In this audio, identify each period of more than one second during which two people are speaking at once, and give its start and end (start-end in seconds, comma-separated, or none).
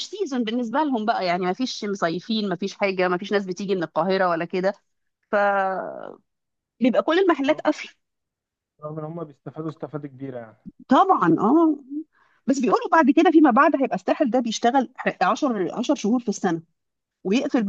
none